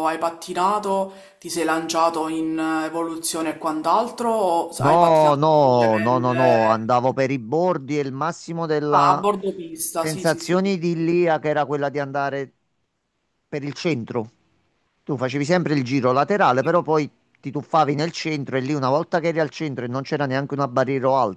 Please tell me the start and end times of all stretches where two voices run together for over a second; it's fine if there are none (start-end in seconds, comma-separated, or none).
4.8-6.9